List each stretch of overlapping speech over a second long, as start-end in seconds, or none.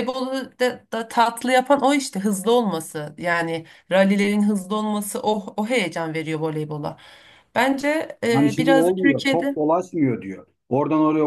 8.3-9.6